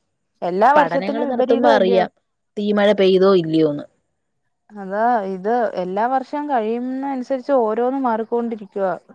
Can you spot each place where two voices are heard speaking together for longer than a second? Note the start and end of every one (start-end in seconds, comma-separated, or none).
0.8-2.0